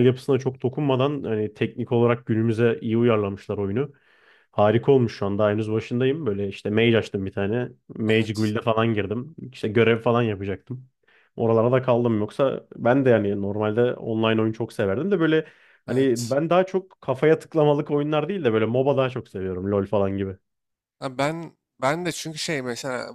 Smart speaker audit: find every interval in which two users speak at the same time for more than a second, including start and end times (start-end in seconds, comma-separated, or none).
none